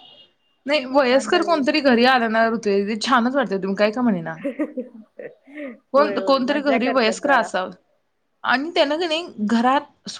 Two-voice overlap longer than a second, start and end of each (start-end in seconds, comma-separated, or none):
6.0-7.5